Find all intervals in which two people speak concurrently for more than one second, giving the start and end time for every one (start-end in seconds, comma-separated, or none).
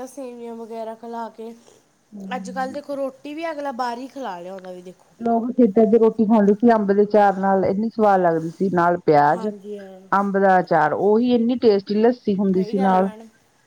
none